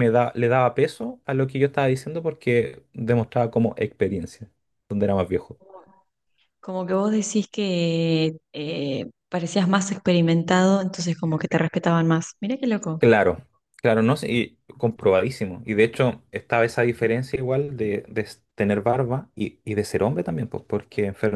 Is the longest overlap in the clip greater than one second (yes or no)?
no